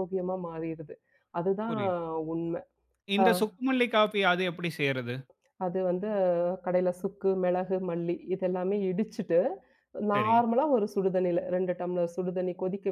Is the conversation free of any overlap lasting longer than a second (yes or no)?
yes